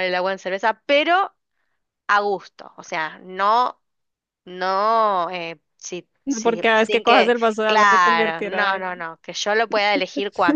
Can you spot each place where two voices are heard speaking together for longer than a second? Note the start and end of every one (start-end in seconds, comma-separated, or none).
6.2-8.8